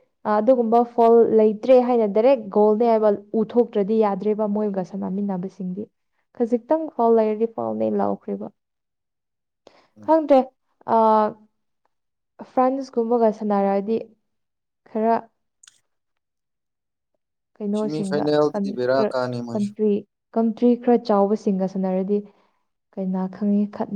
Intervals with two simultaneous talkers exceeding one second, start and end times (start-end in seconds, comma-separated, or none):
17.8-19.7